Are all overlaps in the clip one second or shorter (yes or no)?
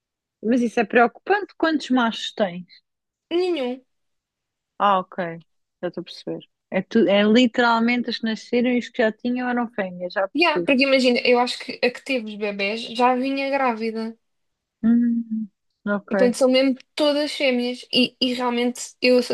yes